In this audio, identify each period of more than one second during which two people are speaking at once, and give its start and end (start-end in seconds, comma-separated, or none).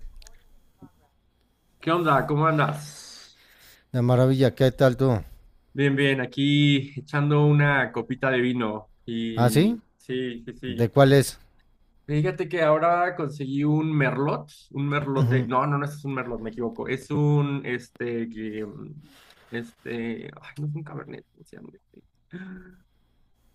none